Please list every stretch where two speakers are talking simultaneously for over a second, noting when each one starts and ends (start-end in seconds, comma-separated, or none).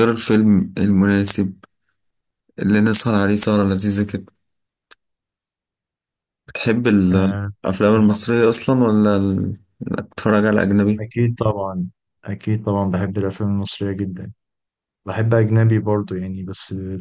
none